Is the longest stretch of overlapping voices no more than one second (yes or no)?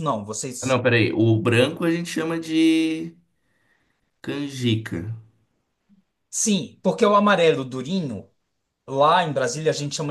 yes